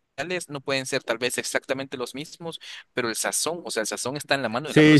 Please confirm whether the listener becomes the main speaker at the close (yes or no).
yes